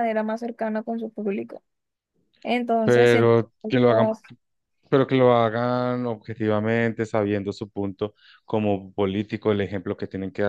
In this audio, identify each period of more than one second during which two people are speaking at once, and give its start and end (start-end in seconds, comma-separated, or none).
none